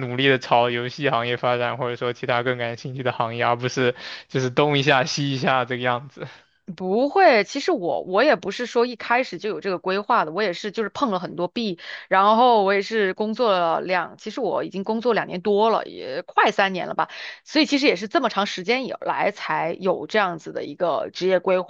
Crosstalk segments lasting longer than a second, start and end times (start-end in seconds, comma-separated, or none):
none